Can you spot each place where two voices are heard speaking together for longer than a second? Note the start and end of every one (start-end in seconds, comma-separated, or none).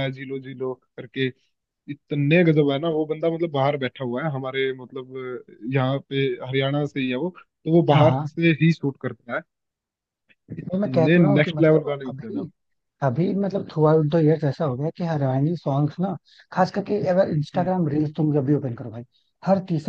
10.6-12.4